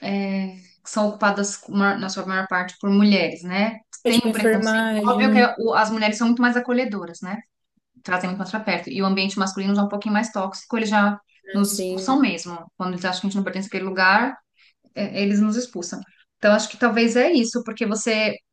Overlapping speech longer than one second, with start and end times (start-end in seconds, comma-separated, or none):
4.0-5.5